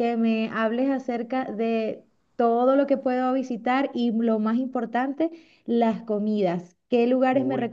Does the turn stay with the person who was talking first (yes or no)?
yes